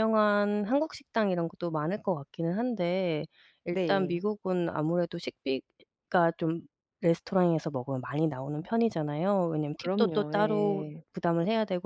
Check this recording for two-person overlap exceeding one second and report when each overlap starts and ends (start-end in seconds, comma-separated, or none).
9.8-11.0